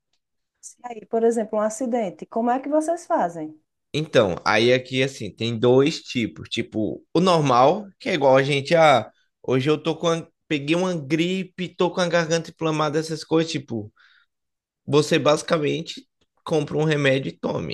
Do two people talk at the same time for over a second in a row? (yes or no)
no